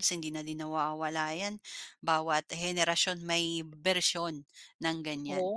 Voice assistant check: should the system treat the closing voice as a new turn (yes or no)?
yes